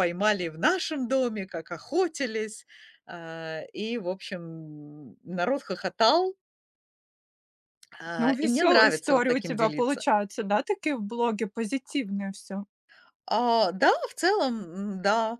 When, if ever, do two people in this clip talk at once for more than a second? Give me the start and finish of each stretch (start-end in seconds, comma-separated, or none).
8.2-10.1